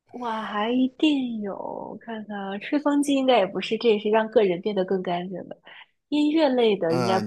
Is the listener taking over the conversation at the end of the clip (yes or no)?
yes